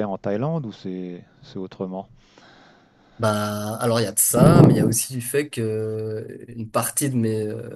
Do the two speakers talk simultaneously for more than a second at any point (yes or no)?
no